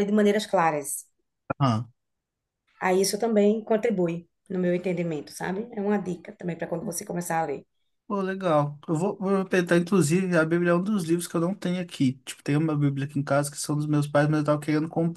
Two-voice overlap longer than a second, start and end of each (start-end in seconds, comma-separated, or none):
none